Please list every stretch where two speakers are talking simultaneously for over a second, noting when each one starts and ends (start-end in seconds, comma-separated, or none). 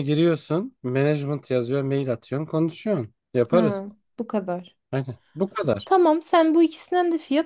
none